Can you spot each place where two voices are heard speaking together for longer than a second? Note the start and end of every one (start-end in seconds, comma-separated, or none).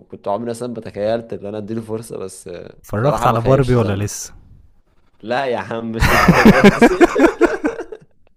2.8-4.0